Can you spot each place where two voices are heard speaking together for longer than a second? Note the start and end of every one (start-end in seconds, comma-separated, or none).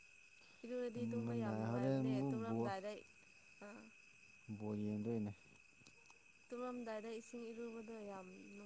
0.9-2.7